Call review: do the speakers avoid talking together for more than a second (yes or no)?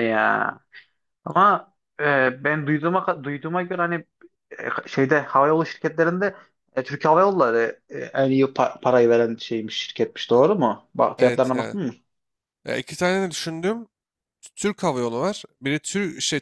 yes